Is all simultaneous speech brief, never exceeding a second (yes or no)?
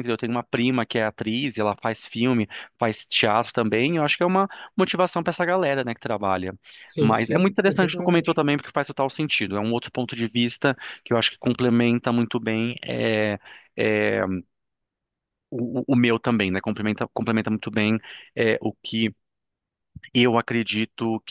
no